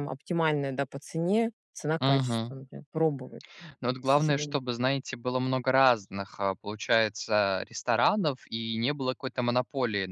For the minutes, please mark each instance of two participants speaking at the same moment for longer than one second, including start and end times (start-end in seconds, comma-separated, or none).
none